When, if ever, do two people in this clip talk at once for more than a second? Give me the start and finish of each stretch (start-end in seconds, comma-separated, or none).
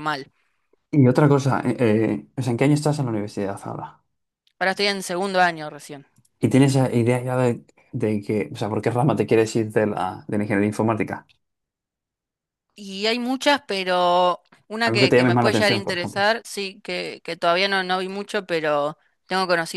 14.8-16.3